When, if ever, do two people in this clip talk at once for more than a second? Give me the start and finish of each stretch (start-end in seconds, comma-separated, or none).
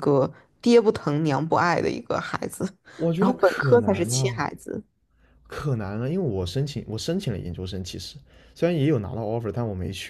3.2-4.5